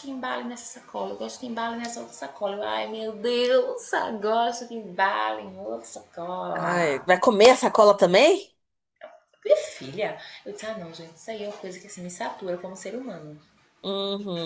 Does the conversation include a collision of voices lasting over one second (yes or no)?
no